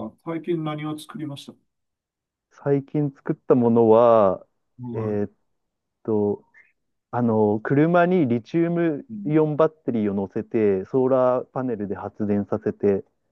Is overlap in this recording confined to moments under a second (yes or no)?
yes